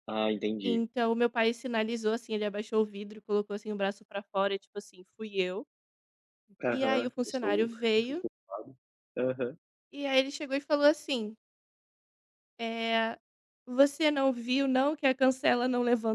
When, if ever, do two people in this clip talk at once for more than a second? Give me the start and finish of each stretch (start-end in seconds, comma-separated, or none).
6.7-8.2